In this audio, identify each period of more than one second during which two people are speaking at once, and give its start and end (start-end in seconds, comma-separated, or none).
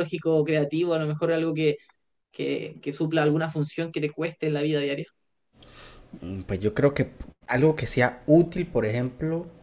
none